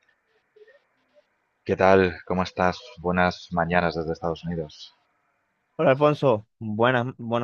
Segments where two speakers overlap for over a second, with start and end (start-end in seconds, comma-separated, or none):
none